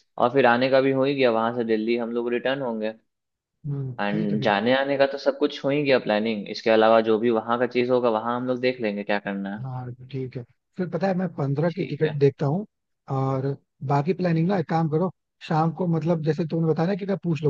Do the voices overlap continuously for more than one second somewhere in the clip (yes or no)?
no